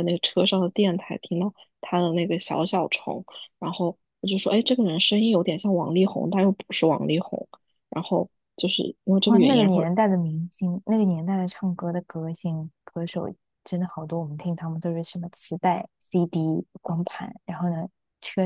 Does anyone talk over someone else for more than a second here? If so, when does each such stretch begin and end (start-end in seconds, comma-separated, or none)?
none